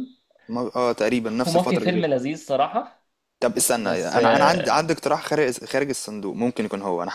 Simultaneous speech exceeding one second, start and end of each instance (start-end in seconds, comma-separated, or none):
3.8-5.0